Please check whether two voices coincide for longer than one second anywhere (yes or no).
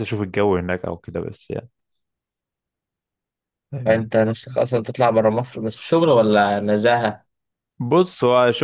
no